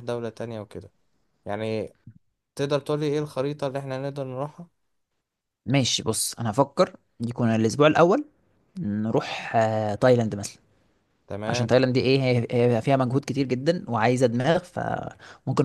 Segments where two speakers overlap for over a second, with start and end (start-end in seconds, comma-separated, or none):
none